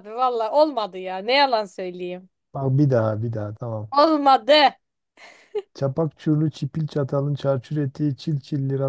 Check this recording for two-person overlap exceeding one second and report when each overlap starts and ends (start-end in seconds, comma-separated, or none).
none